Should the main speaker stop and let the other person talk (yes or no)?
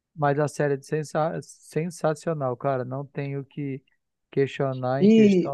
yes